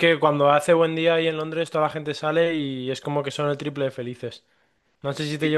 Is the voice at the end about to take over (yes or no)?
no